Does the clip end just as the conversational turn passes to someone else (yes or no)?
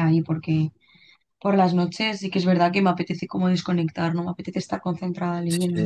yes